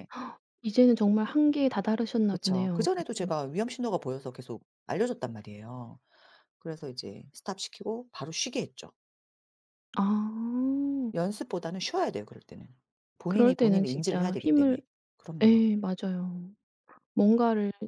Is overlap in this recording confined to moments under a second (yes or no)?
no